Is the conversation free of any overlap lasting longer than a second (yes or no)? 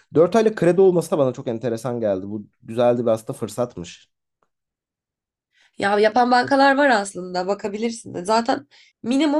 yes